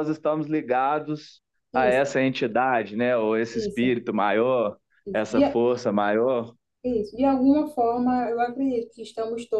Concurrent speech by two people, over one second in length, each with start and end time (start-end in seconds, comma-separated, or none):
none